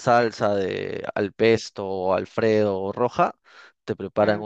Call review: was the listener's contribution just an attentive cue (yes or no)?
yes